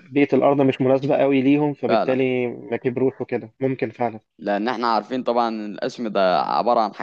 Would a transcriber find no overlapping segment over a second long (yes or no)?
yes